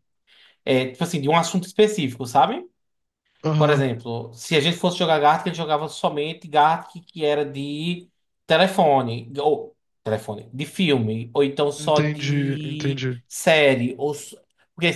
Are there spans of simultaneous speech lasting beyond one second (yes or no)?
yes